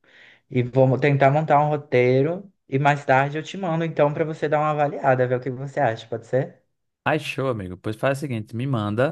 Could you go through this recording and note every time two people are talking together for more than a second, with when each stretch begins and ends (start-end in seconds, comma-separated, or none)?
none